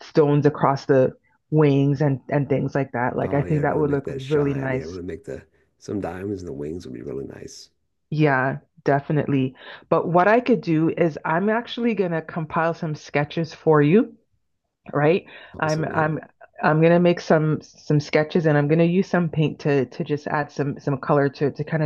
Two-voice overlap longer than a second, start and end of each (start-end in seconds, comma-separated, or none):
3.2-5.0